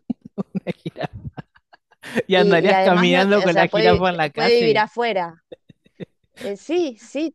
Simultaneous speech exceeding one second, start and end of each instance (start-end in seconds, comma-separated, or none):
2.3-4.8